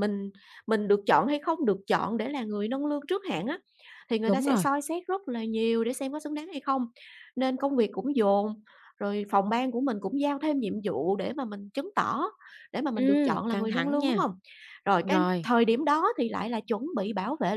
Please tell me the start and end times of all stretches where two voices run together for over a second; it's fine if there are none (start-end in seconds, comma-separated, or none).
12.9-14.2